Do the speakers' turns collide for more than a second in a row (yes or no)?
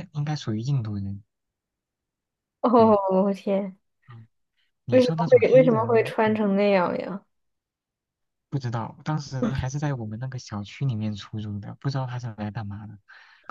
yes